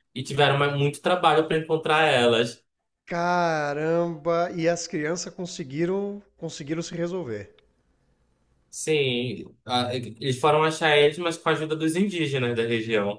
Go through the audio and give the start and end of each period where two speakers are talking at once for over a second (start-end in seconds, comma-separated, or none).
none